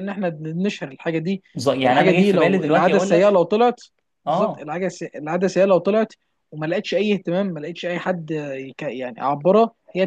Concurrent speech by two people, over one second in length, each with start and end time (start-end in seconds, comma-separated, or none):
1.8-3.4